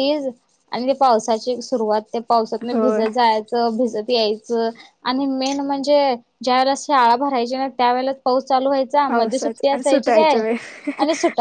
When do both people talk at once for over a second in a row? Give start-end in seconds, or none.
9.1-10.3